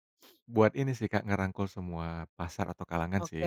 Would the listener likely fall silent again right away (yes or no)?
no